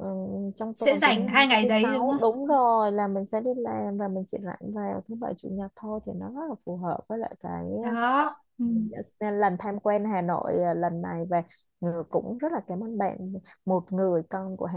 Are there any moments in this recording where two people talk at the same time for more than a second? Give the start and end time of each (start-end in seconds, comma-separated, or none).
0.8-2.5